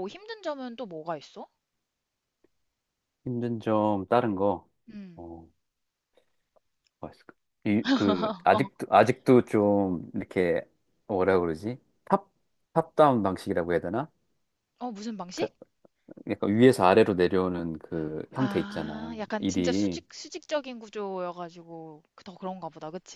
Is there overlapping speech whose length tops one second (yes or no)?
yes